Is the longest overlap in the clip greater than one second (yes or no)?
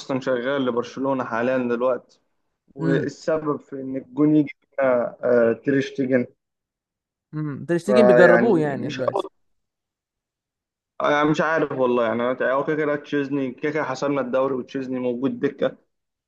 yes